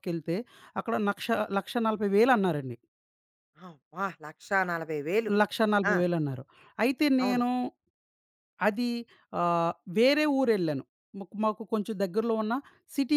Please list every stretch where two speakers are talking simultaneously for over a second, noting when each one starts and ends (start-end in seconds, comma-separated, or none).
none